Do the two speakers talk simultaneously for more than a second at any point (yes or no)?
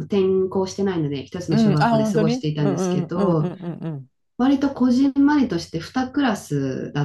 yes